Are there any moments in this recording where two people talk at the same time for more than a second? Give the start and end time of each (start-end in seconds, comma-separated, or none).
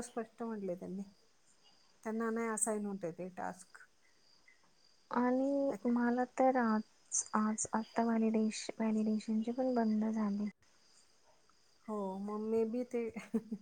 none